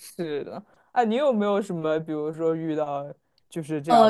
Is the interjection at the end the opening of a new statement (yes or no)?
yes